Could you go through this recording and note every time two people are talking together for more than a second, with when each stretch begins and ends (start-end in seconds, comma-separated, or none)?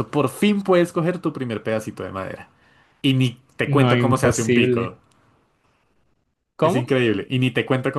3.6-4.9